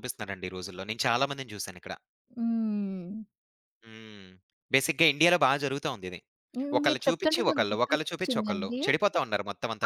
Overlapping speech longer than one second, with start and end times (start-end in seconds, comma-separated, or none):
6.8-8.8